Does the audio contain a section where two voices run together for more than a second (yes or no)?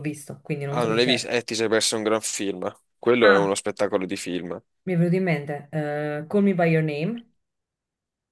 no